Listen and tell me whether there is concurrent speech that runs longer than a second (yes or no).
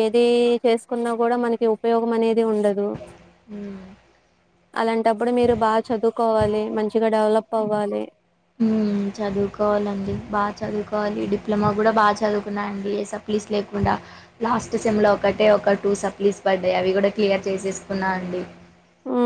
no